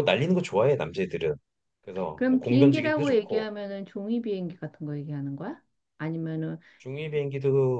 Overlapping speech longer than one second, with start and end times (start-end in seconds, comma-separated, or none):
2.1-3.5